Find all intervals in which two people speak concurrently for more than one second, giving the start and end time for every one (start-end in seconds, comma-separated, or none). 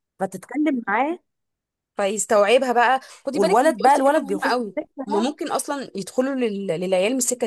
3.3-5.3